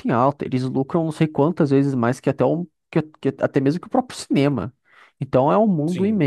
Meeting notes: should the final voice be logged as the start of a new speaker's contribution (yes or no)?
no